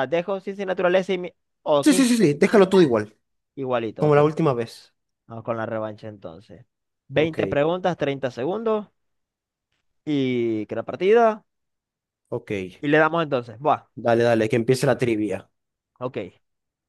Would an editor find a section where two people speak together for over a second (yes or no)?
no